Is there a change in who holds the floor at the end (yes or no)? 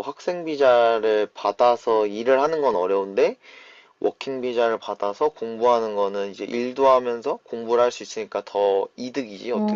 yes